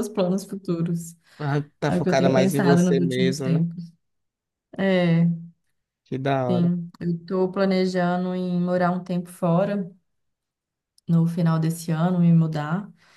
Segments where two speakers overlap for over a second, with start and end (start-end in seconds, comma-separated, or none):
1.9-3.6